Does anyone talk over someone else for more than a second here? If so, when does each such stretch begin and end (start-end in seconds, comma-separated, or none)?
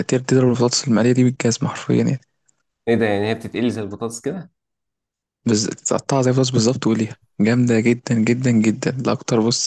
none